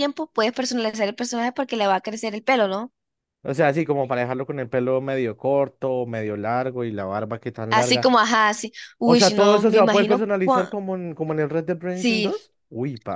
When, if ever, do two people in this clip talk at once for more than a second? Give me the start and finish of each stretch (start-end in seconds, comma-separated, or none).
9.0-10.8